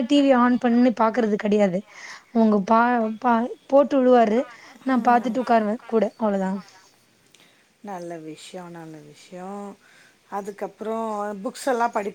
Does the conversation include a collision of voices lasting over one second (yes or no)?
no